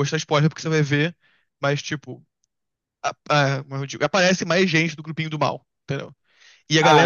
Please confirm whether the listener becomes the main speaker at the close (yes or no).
no